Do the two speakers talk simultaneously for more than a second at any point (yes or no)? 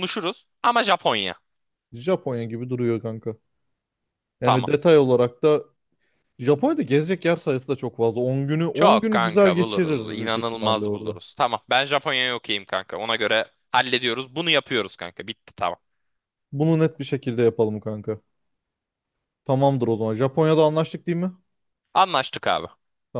yes